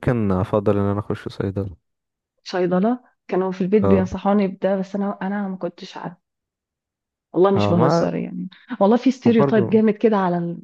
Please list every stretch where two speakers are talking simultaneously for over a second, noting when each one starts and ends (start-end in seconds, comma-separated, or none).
none